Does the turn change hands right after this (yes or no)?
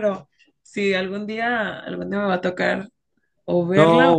yes